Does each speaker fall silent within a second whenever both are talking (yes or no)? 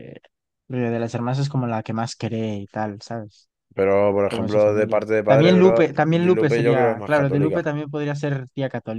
no